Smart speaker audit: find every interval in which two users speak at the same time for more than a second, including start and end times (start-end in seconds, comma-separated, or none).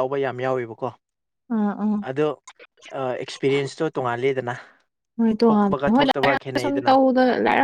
5.5-6.9